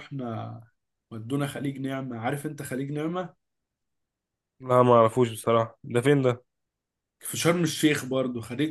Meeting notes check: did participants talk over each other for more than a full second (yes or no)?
no